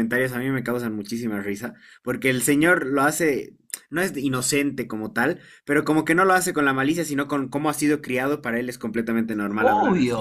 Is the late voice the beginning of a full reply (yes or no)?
yes